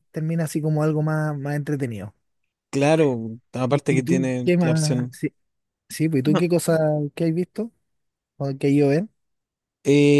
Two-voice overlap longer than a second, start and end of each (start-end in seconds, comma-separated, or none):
3.7-5.2